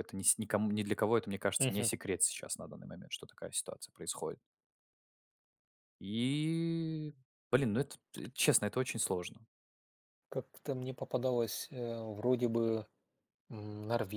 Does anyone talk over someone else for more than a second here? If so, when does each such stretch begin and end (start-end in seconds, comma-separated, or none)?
none